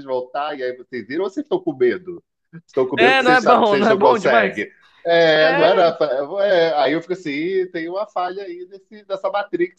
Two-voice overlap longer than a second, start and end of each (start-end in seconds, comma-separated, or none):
3.0-4.7